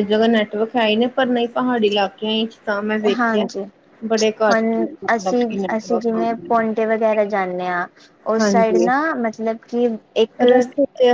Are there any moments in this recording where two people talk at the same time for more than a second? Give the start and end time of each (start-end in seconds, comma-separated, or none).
4.5-6.7